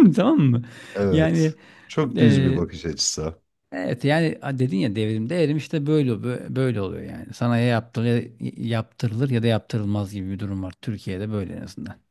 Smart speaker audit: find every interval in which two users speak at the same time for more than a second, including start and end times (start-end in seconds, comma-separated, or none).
none